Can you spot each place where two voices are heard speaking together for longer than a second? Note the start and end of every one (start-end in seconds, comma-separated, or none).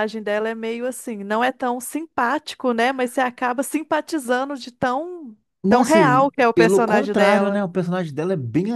5.6-7.6